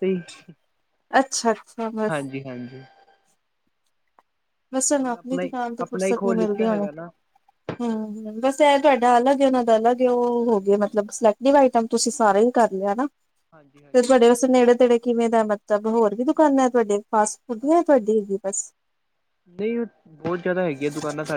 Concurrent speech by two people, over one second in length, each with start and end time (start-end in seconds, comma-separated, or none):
5.0-6.9